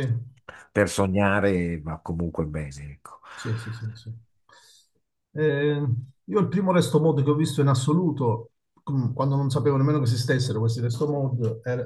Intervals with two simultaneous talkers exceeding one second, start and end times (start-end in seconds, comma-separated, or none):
none